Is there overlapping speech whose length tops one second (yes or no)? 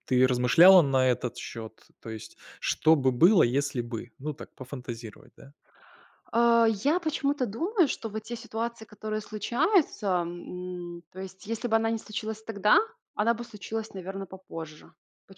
no